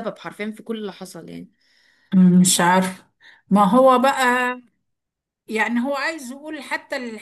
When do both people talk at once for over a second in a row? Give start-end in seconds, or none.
none